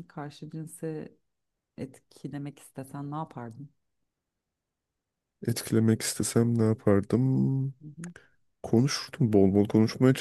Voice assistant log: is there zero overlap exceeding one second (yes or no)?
yes